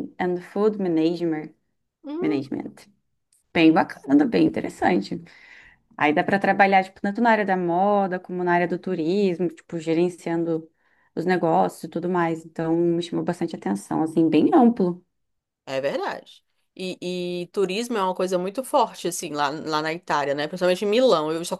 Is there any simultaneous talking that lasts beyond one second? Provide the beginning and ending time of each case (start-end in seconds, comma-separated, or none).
none